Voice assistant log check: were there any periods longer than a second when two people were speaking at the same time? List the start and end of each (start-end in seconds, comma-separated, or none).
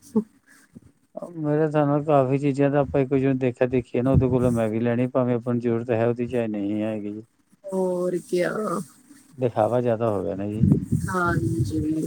none